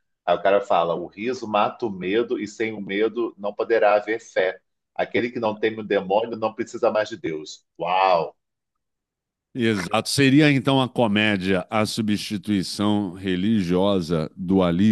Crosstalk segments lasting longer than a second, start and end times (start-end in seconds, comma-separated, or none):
none